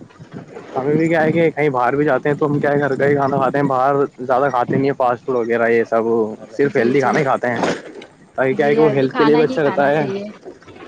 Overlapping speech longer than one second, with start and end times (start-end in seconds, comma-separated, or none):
8.6-10.1